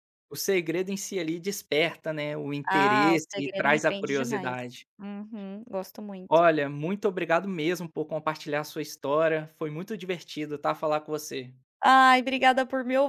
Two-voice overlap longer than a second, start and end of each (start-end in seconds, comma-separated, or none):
2.7-4.6